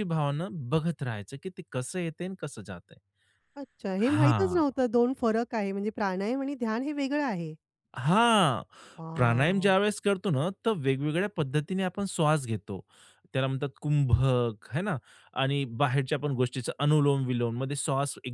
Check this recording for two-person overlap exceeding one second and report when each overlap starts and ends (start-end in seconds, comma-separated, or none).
none